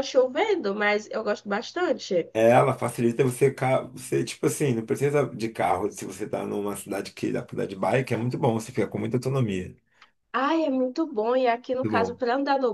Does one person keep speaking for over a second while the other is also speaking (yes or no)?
no